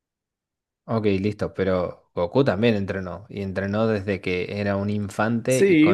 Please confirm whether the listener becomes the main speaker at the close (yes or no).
yes